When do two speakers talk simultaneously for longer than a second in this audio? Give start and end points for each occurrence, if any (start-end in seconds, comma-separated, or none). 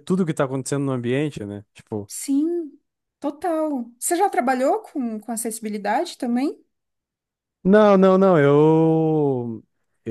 none